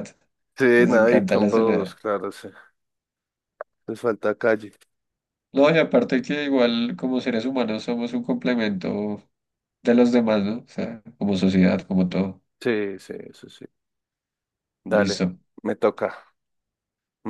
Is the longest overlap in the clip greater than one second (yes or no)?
yes